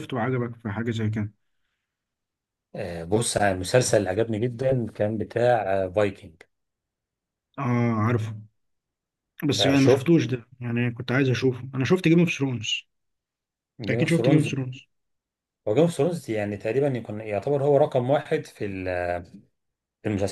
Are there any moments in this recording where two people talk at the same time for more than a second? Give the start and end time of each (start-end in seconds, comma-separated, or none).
none